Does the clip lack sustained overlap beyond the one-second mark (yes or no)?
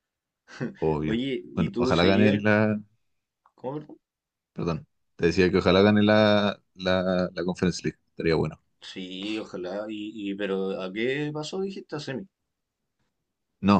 no